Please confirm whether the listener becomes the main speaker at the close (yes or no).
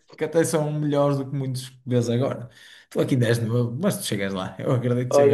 yes